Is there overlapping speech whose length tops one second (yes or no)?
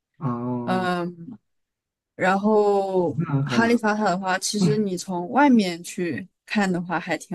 no